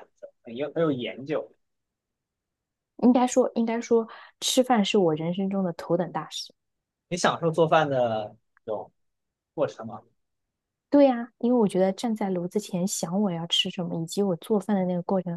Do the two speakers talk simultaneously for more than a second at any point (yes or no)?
no